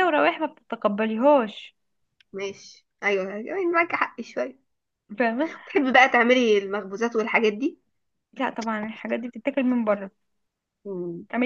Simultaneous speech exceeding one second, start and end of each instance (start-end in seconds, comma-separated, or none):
none